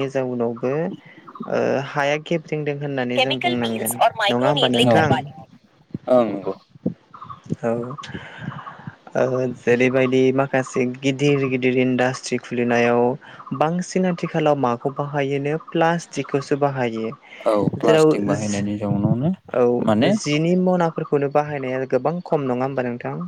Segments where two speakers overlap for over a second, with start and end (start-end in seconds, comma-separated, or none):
3.2-5.1